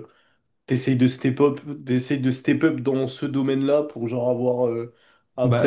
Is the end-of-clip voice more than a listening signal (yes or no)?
no